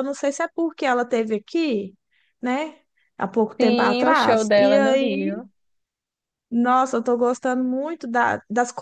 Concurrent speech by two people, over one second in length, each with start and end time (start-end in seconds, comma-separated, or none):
3.6-5.4